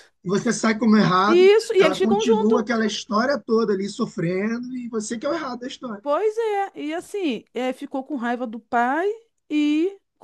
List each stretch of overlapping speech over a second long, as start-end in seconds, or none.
1.3-2.6